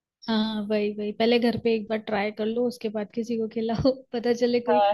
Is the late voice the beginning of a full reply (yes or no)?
yes